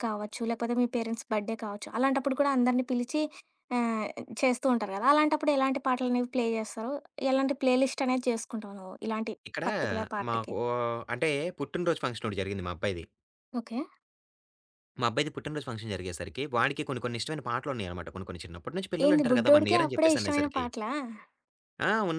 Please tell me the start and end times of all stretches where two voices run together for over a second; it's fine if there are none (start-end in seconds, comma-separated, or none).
19.1-20.6